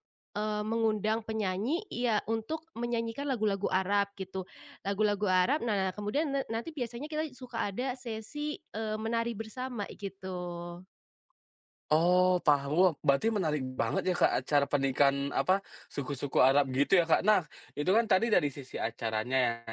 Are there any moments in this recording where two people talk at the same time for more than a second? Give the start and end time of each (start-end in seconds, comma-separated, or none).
none